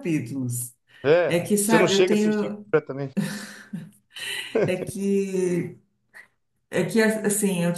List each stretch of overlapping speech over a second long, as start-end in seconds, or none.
1.3-2.6